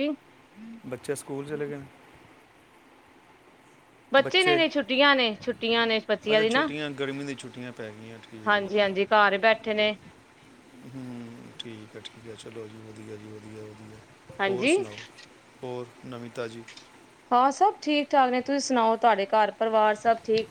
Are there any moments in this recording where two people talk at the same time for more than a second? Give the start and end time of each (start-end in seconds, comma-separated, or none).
none